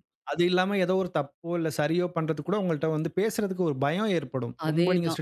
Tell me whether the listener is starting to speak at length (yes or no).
no